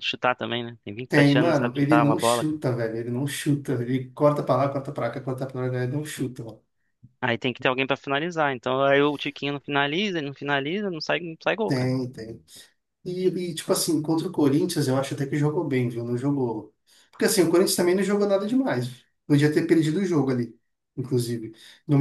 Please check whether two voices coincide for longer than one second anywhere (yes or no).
yes